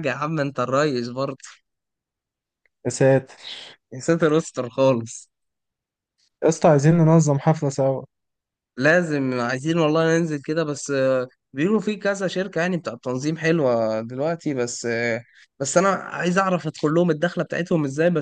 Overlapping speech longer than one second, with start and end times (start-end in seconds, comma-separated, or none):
none